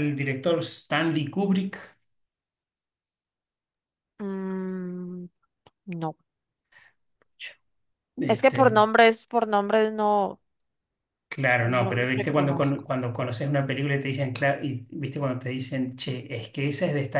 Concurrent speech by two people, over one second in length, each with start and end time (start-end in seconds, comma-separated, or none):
11.6-12.9